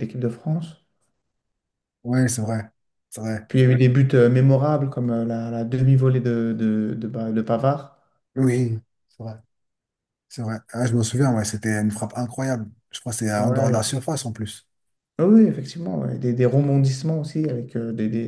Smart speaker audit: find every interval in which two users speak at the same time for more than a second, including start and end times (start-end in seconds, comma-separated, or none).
none